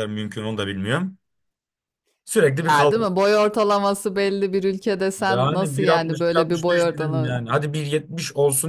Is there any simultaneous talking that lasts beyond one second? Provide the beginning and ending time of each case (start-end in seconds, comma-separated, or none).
5.2-7.4